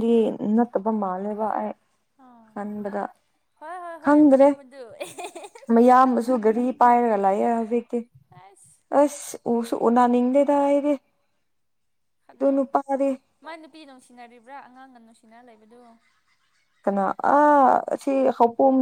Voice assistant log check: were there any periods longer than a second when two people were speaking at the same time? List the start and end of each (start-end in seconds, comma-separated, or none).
none